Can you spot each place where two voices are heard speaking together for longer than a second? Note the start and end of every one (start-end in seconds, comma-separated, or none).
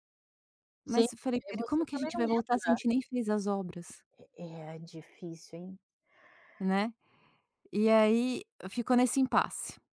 0.8-2.8